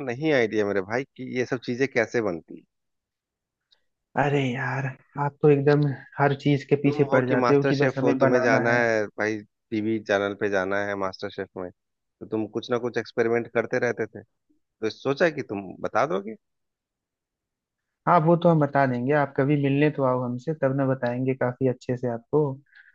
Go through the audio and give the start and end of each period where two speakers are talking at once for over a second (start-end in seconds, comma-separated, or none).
6.8-8.8